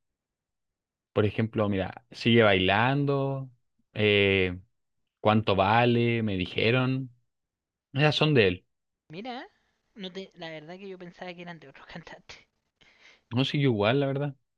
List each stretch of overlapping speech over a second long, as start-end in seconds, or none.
none